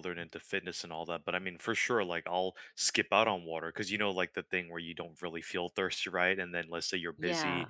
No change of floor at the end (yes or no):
yes